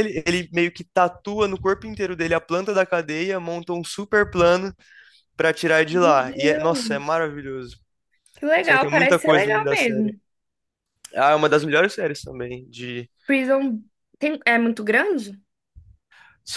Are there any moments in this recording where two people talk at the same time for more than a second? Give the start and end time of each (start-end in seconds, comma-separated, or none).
5.9-7.2, 8.6-10.1